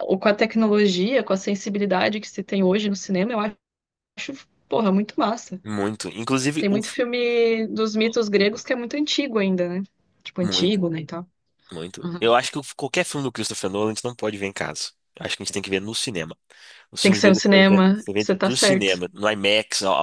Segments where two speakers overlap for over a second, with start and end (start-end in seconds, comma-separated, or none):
17.0-19.0